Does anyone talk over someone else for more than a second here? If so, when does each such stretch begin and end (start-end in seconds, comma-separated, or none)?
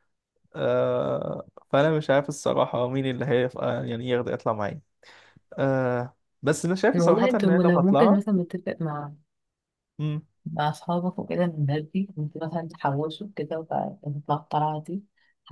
7.0-8.2